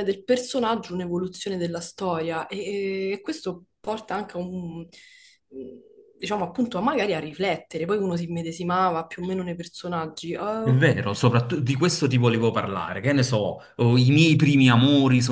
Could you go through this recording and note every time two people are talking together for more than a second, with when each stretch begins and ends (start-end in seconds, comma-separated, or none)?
none